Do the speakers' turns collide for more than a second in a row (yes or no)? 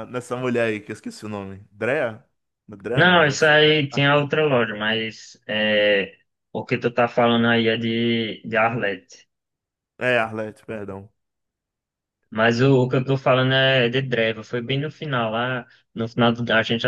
no